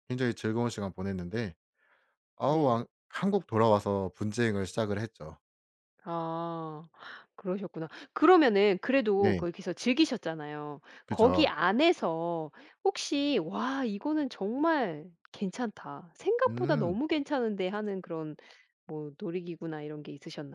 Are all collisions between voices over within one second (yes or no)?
yes